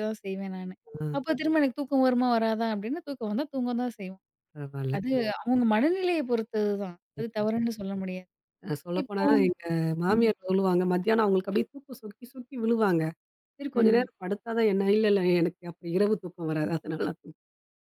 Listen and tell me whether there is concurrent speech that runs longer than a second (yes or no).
no